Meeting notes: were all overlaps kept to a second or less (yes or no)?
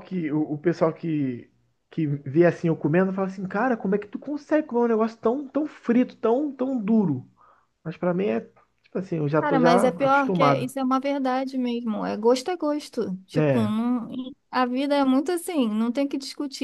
no